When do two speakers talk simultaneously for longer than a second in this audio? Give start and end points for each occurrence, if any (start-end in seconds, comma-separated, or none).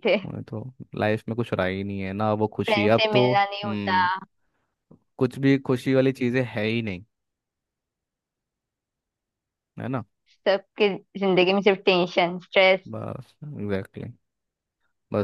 2.7-4.0